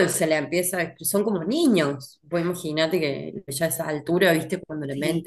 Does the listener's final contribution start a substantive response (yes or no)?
no